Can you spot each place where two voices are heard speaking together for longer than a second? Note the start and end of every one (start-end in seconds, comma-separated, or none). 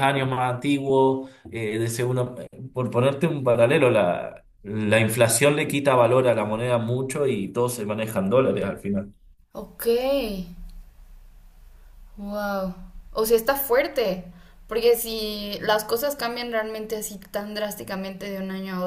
none